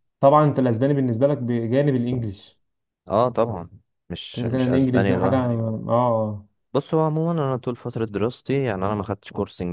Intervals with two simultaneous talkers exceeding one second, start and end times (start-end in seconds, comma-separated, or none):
4.3-5.5